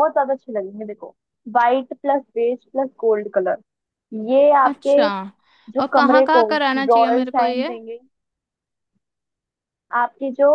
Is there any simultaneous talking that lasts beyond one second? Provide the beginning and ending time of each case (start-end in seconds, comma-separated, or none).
5.8-7.7